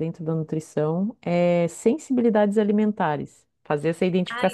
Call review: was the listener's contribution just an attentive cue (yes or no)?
no